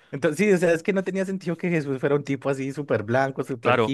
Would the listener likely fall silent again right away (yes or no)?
yes